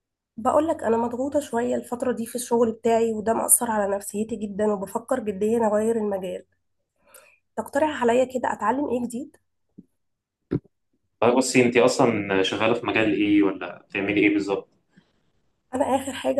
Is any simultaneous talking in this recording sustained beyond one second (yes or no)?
no